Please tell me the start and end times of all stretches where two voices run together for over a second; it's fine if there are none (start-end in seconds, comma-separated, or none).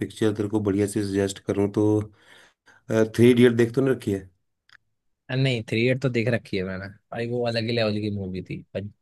none